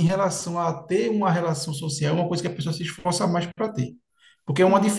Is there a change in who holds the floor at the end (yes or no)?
no